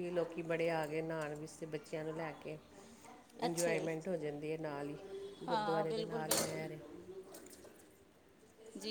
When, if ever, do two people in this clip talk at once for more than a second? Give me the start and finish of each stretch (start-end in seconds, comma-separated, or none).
5.5-6.7